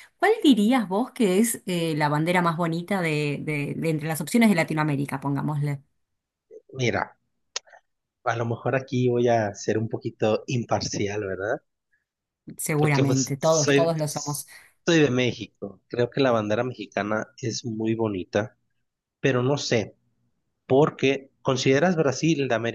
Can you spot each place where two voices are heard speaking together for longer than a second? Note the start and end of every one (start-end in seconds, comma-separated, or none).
12.8-14.4